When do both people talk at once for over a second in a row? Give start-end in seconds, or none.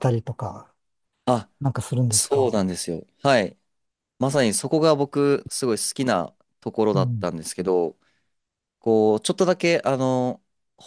none